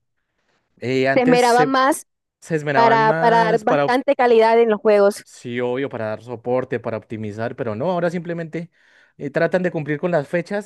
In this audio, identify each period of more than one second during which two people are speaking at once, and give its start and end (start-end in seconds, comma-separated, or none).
2.7-4.0